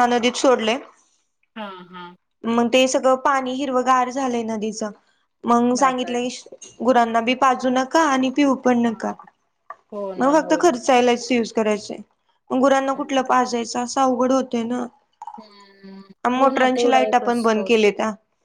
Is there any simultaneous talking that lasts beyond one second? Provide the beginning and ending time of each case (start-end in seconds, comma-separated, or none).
16.4-17.9